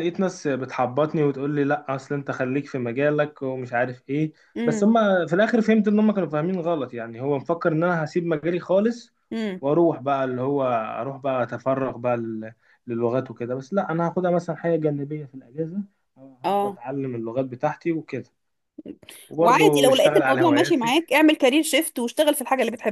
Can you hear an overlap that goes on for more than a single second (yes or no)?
yes